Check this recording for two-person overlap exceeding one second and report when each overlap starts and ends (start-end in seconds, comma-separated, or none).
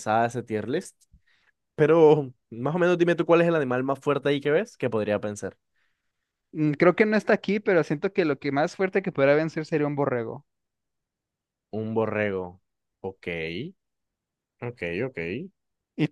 none